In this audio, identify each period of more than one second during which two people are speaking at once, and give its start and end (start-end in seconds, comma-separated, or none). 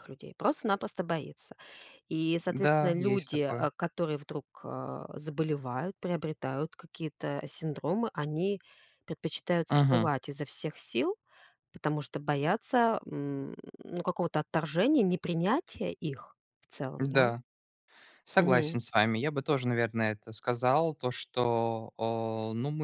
2.5-3.7